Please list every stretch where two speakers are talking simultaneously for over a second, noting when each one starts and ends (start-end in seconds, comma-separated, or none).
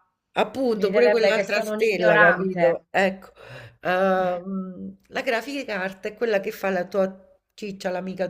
0.7-2.9